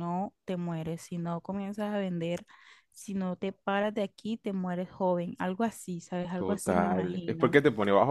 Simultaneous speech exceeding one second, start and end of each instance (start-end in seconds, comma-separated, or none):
6.3-7.5